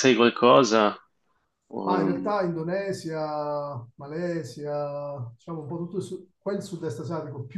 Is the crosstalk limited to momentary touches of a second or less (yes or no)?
yes